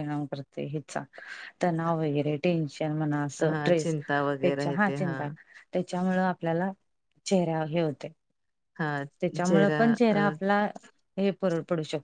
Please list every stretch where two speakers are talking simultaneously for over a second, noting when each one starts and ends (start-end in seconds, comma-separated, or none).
3.4-5.3